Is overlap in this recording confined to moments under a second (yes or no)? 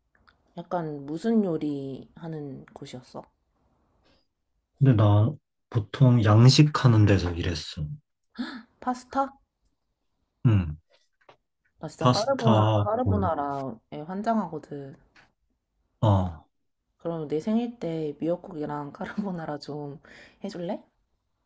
no